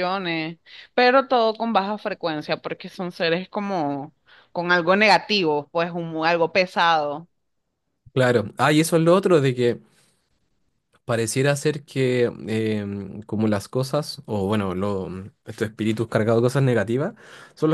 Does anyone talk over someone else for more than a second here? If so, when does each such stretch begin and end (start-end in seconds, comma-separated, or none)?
none